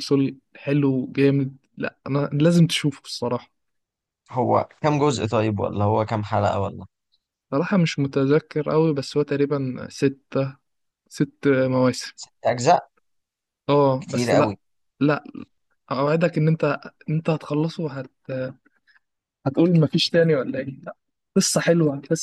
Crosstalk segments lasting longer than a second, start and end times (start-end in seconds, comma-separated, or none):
none